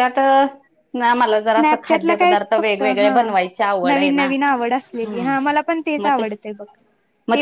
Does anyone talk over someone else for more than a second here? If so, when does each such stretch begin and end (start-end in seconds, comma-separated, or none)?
1.5-3.1